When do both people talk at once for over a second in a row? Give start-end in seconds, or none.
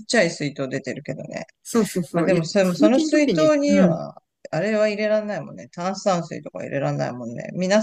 2.1-4.0